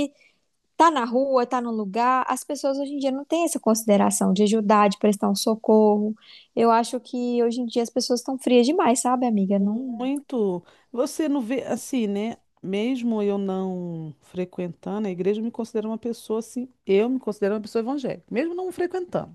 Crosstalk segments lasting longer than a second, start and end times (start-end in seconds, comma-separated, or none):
none